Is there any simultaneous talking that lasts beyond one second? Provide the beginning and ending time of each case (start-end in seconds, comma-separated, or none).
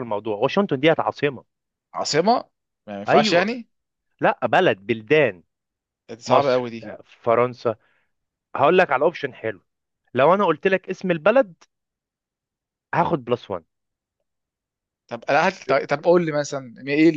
none